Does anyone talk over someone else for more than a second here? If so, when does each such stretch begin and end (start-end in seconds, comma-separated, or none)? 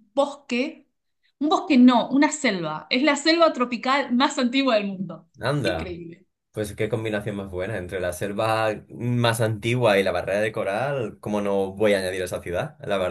none